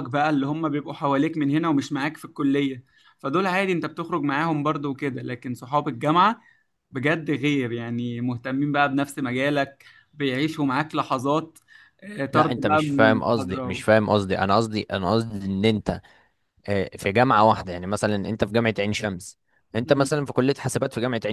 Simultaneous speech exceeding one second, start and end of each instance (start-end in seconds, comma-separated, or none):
12.3-13.8